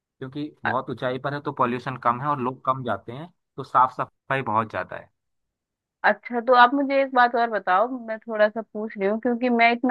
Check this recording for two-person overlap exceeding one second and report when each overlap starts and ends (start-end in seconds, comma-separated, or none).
none